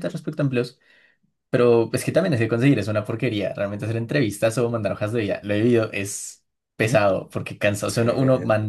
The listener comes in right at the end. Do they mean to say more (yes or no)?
no